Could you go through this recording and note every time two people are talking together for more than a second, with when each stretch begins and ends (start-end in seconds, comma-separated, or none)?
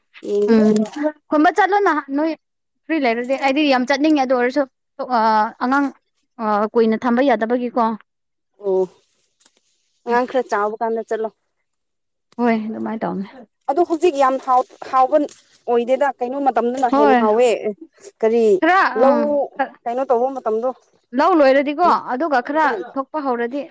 none